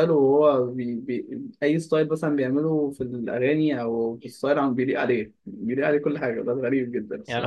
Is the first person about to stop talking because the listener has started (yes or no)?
yes